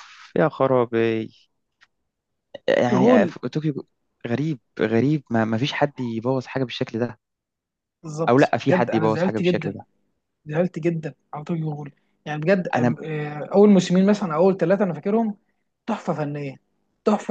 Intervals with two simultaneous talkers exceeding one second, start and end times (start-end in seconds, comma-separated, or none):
8.3-9.8